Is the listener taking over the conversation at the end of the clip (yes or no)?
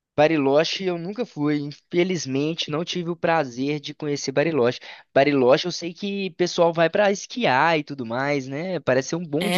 yes